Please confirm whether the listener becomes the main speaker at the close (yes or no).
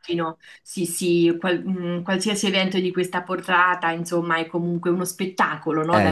yes